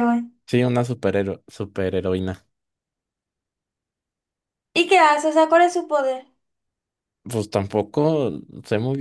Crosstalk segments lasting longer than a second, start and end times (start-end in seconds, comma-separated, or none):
none